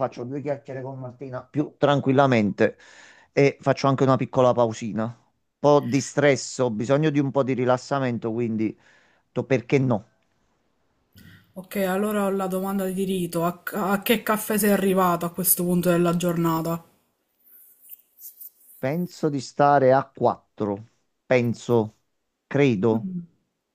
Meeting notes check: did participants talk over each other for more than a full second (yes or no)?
no